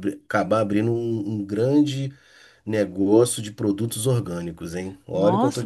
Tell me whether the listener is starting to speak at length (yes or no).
yes